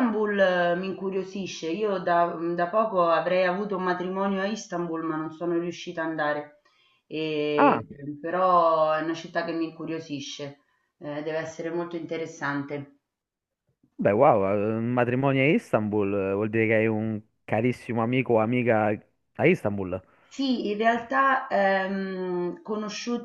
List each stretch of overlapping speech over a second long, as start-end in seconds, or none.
none